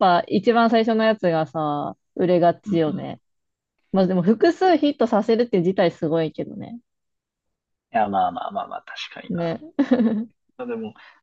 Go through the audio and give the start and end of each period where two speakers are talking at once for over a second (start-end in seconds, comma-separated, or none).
none